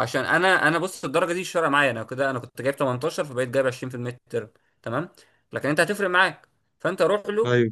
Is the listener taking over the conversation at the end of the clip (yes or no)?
no